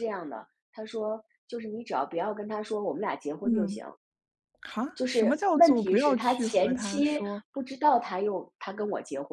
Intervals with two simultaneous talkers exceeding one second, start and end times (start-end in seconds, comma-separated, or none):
5.0-7.4